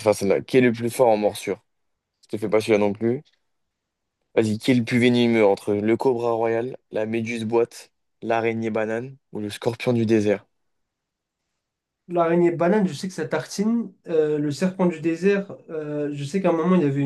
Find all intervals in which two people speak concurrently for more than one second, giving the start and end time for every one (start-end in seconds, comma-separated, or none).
none